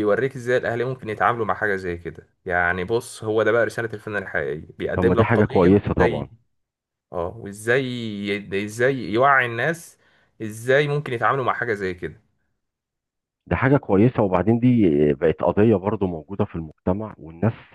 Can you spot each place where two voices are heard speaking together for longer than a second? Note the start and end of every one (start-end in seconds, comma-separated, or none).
5.0-6.3